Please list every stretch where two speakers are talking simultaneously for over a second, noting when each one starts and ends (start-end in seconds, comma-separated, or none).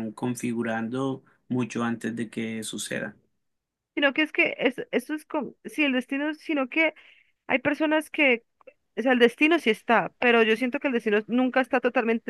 none